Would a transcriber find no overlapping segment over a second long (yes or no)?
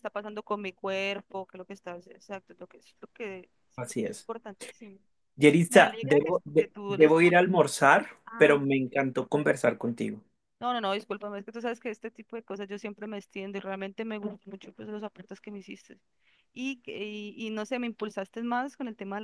no